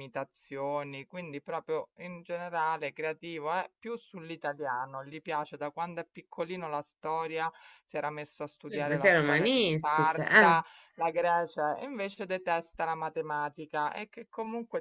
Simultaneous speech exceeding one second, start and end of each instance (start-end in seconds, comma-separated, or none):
8.7-10.6